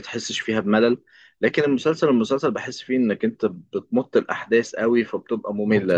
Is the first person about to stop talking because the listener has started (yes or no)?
no